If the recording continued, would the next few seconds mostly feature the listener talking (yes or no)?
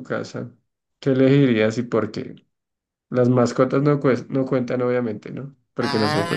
yes